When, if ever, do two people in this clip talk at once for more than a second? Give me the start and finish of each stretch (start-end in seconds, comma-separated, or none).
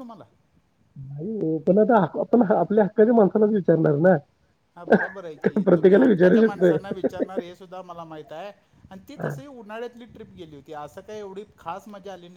5.4-6.7